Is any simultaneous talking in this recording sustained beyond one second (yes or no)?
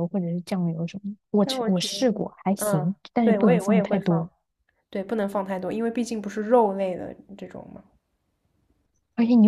yes